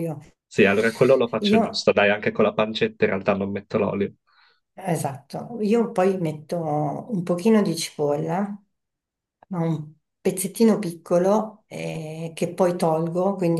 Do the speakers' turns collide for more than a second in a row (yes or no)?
no